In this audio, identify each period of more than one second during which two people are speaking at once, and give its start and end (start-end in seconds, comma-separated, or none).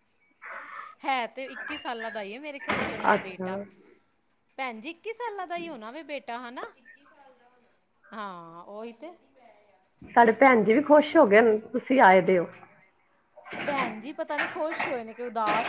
none